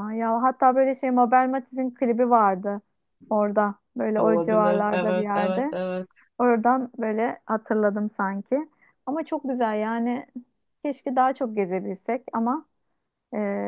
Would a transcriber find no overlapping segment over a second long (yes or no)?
no